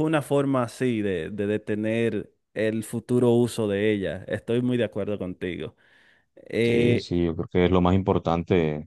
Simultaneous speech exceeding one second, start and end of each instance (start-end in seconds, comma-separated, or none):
none